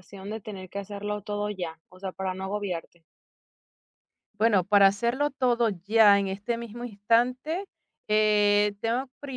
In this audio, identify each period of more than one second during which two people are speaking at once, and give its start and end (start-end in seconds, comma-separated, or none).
none